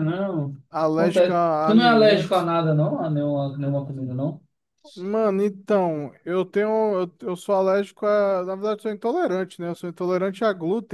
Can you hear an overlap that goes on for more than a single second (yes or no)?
yes